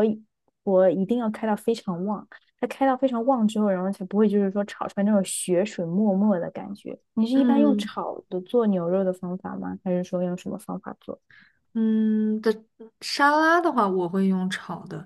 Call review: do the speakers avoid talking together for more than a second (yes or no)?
yes